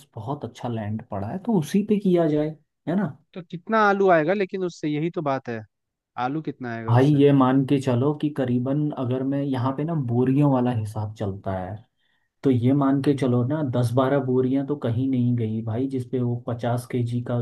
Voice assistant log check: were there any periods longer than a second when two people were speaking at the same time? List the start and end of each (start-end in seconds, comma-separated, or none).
none